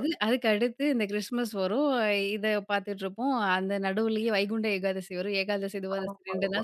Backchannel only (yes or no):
yes